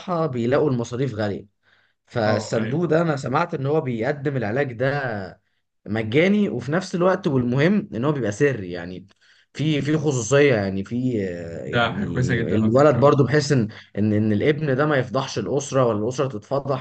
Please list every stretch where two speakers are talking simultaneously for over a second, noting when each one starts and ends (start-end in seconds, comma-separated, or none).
11.6-13.2